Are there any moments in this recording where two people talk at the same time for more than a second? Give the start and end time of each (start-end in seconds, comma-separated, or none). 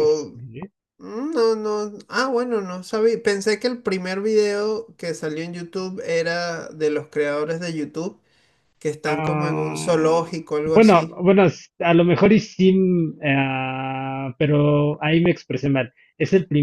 9.1-11.2